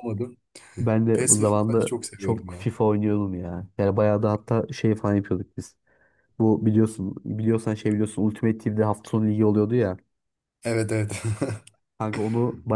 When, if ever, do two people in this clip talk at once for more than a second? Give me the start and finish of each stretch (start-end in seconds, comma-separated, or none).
1.1-2.7